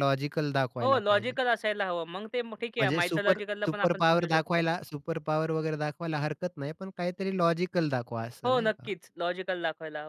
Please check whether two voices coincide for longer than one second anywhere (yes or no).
yes